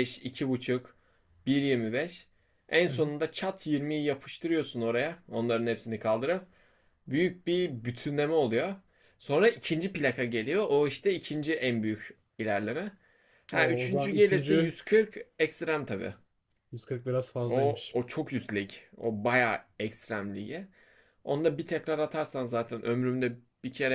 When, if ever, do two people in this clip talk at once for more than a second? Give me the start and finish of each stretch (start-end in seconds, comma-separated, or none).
13.5-14.8